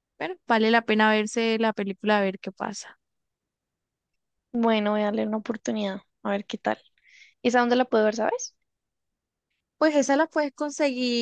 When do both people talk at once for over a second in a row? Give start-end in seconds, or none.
none